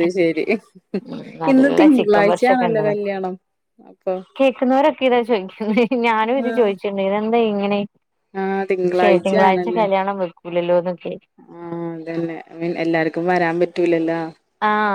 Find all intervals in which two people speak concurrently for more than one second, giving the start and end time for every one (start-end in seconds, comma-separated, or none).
1.5-2.9